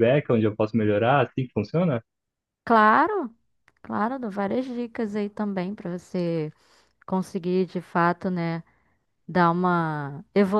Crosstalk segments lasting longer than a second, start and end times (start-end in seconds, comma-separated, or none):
none